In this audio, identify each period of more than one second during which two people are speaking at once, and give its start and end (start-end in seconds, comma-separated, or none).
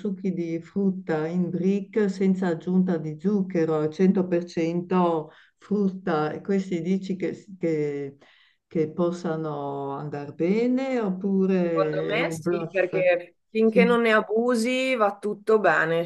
11.6-12.9